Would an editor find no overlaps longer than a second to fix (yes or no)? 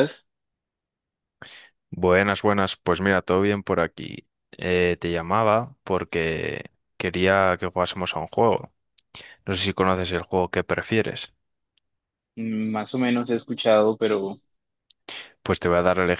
yes